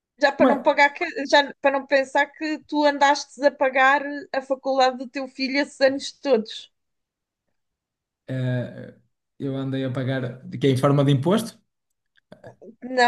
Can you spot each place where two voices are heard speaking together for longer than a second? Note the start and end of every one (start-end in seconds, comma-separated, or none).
none